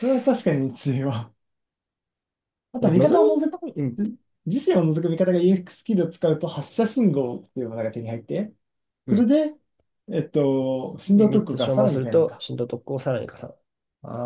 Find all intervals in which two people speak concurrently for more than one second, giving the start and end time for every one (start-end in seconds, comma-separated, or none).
11.1-12.4